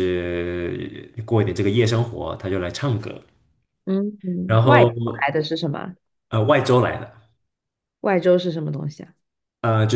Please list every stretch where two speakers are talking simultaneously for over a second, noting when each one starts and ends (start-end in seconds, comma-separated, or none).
none